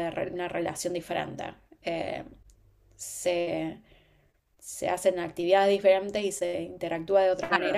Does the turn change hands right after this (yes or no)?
yes